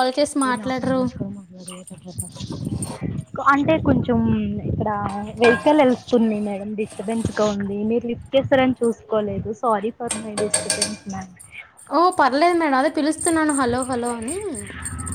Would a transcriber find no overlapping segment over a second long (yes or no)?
yes